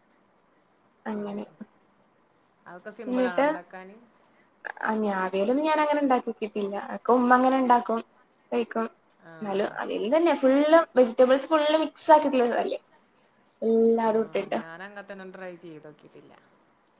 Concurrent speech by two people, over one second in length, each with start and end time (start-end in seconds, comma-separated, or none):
none